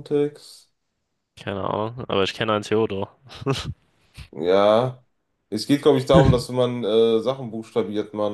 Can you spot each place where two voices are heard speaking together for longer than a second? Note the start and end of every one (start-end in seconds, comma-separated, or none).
none